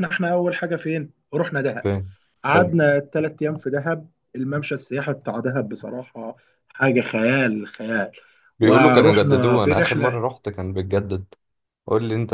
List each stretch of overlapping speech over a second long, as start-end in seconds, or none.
8.6-10.2